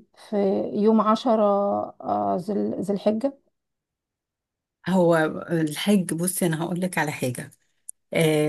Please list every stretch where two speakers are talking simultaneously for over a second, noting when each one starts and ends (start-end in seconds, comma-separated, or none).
none